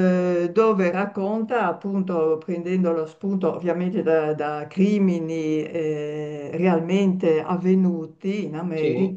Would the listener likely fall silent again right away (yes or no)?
yes